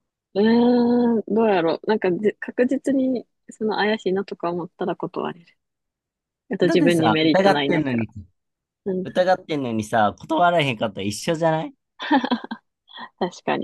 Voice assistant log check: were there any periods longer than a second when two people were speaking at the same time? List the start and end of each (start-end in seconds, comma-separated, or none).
6.6-8.1